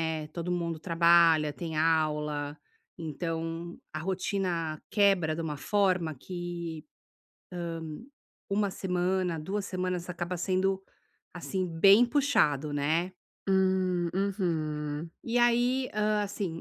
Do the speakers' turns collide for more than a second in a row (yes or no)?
no